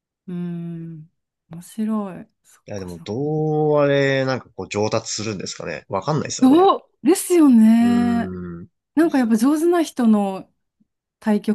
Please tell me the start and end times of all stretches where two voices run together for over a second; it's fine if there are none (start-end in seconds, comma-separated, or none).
none